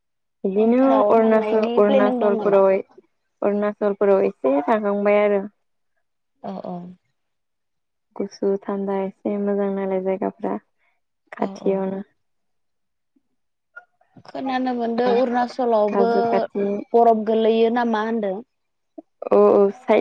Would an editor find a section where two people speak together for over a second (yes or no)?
yes